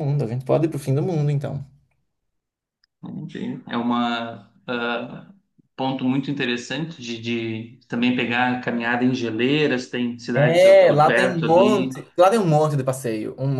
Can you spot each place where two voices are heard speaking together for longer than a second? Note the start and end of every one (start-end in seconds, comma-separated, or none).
10.4-11.9